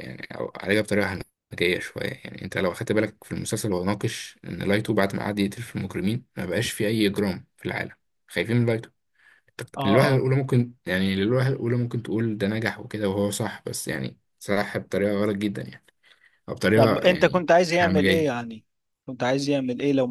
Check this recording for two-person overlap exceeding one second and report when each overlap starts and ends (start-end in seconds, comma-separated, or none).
16.7-18.3